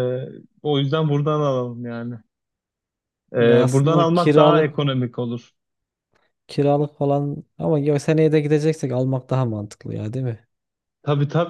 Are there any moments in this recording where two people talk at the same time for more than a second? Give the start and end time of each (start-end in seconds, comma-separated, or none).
3.4-4.8